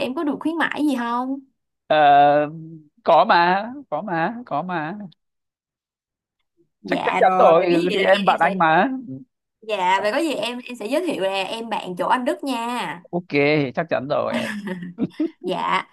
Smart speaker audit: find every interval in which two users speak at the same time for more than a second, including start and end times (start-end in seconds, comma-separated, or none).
6.8-8.5